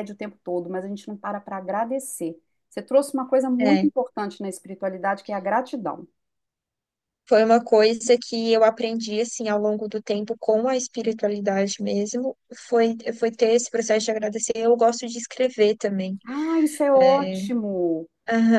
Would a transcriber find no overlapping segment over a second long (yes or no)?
yes